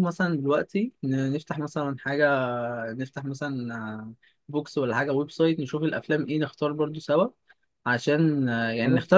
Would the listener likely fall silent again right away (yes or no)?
yes